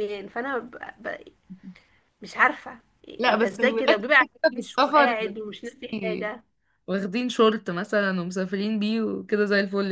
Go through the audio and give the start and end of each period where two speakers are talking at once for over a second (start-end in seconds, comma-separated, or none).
3.3-5.2